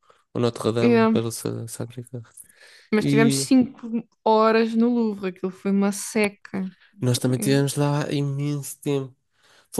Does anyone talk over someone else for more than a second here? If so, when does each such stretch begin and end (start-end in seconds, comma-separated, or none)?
none